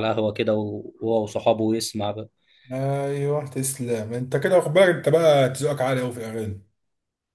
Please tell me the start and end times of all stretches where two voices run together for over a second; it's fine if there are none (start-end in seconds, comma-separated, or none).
none